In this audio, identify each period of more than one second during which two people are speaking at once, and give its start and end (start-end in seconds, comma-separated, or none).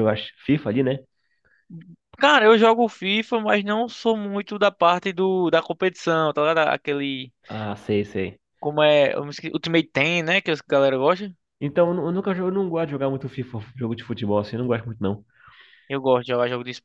none